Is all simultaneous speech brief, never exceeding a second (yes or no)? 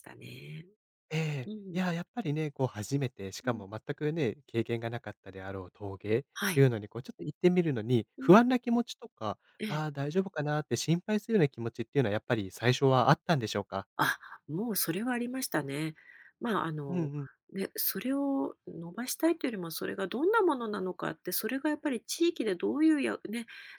yes